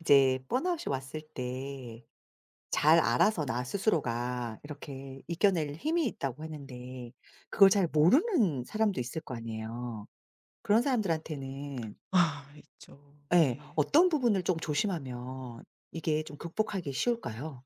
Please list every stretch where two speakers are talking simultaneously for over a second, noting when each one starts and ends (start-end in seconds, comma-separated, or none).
none